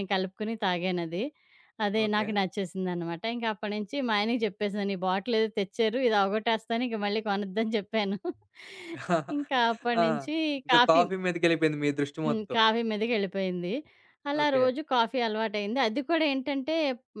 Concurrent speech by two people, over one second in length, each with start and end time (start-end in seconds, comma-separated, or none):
none